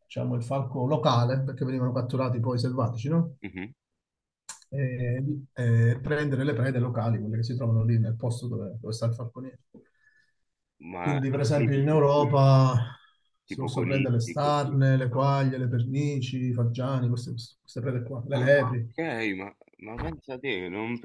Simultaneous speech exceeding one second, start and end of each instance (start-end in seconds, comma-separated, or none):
11.0-12.4, 13.5-14.8